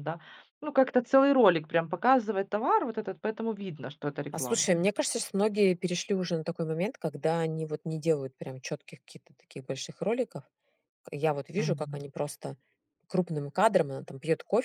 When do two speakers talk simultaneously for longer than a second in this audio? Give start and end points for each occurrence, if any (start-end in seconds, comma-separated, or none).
none